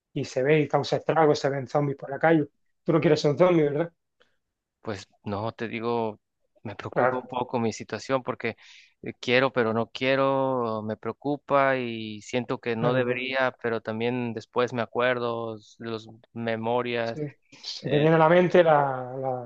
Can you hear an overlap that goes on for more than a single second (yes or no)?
no